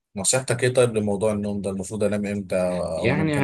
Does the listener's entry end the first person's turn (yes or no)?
yes